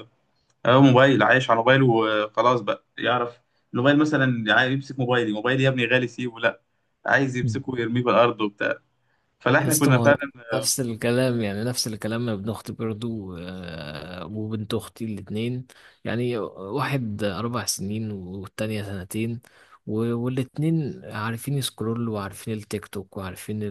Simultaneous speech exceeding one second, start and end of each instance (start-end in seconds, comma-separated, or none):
none